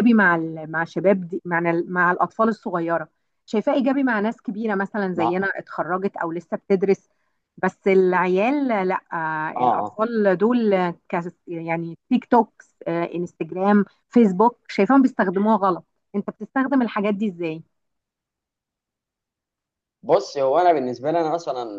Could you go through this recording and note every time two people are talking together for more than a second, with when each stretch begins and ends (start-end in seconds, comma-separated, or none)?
none